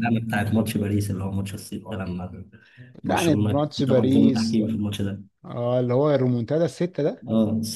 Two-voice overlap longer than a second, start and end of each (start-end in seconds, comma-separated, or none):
3.0-4.6